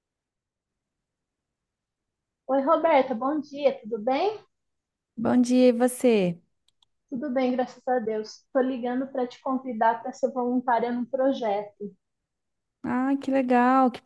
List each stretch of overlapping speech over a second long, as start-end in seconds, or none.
none